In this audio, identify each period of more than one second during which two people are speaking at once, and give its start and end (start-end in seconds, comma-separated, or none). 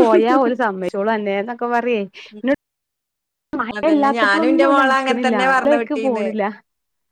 3.8-6.3